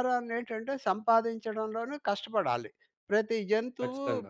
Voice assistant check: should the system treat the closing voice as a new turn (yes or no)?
no